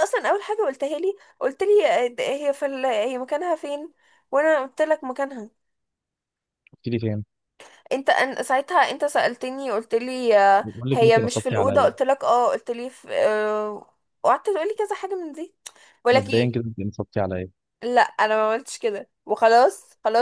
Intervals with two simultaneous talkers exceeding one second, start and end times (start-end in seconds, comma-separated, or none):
10.6-11.9